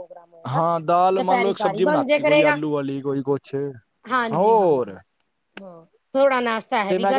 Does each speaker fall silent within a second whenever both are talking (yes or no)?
yes